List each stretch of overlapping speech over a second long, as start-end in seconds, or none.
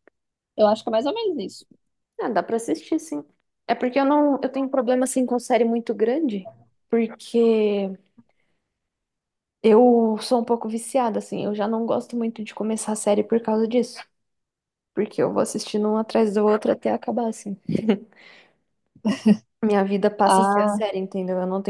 none